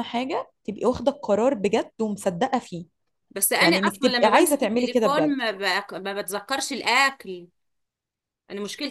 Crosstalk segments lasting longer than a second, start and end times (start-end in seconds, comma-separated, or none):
3.6-5.3